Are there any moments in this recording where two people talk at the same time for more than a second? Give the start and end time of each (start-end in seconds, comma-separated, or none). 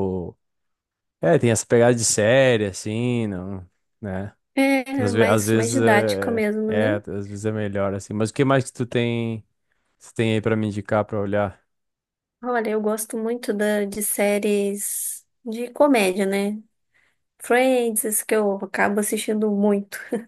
5.0-7.0